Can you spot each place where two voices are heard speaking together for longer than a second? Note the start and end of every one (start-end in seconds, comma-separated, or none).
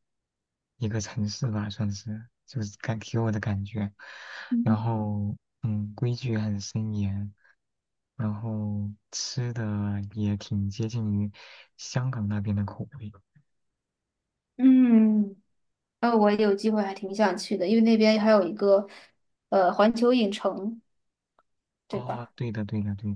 none